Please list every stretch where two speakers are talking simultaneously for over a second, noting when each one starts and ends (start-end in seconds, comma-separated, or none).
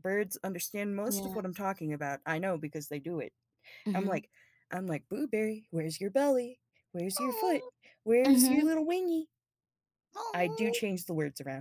none